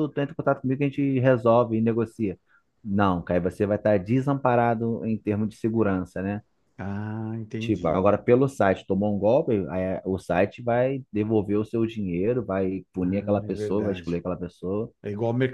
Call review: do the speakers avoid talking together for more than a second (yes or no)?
no